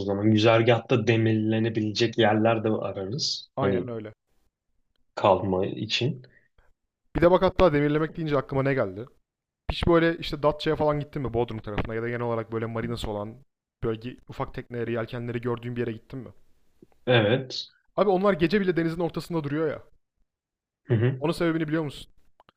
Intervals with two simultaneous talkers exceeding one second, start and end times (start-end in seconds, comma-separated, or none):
none